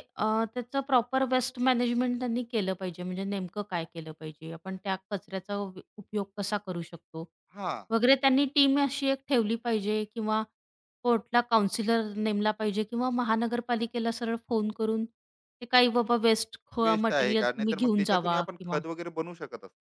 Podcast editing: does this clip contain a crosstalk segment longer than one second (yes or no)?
yes